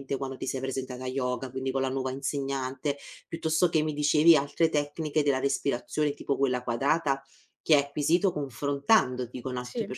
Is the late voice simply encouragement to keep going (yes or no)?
yes